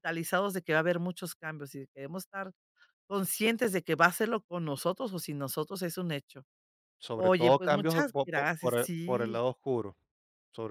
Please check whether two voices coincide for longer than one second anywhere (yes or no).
yes